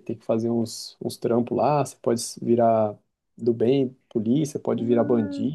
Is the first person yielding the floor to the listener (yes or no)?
yes